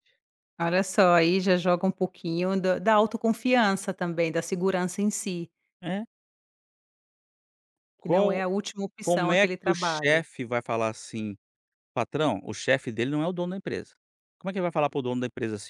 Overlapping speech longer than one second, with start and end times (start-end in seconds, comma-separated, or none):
9.0-10.2